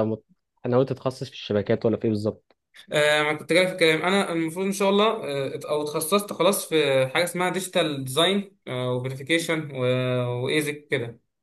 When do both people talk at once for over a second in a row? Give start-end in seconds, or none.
none